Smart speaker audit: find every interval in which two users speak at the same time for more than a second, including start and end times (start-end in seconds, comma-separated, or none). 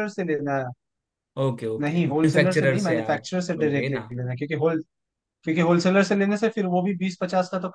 1.8-4.1